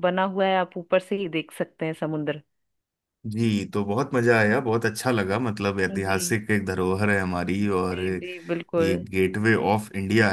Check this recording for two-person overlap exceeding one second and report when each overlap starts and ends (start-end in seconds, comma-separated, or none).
none